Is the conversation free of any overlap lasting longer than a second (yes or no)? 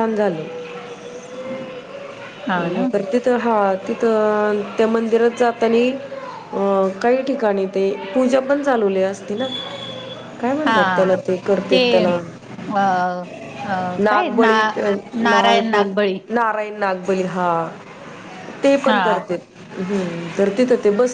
yes